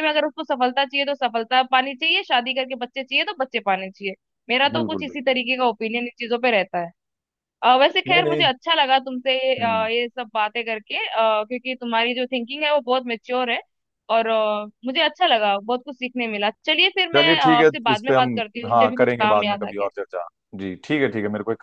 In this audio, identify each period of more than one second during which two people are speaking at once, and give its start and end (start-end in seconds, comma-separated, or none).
17.1-19.9